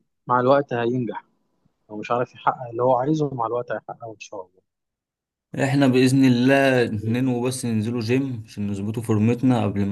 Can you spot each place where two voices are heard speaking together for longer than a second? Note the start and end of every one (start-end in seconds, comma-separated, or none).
none